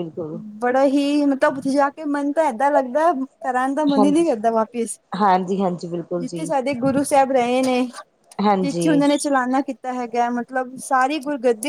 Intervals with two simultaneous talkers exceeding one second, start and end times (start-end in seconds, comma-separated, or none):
none